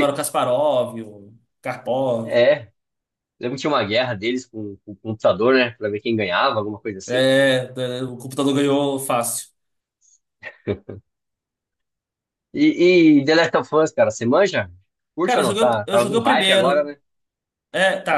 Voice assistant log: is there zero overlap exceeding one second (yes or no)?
no